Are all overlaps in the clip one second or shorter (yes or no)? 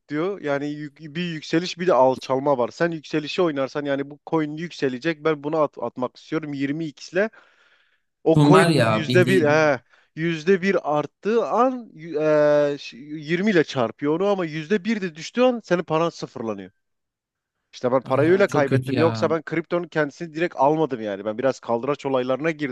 no